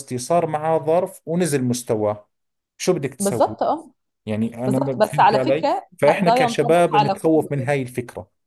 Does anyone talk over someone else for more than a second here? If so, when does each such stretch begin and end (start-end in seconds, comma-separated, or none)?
4.7-7.7